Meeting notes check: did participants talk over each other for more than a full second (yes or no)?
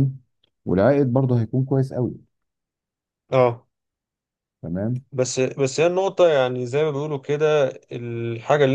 no